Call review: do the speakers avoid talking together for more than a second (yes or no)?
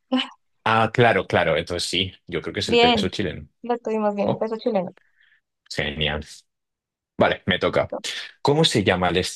yes